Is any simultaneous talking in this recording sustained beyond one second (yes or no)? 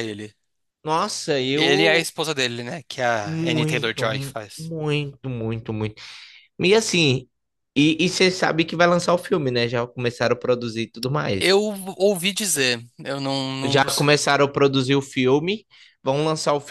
yes